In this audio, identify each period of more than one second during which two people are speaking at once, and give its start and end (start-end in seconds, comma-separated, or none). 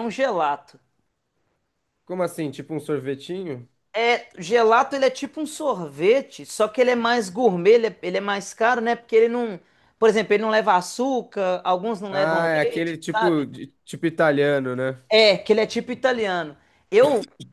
12.1-13.4